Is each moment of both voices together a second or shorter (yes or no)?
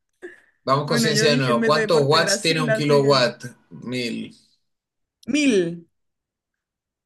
no